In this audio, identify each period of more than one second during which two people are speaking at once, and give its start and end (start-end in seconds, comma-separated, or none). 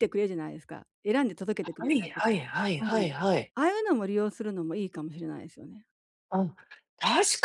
none